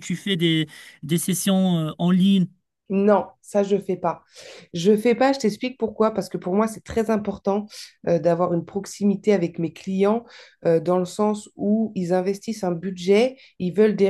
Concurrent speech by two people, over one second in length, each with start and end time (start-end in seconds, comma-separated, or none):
none